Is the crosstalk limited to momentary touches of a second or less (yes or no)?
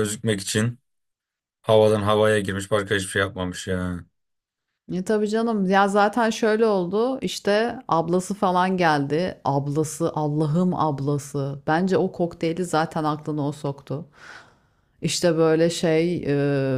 yes